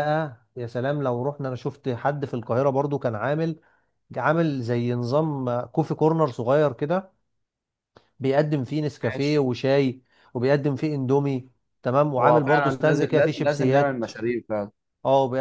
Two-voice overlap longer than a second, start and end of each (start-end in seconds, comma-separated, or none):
12.2-14.1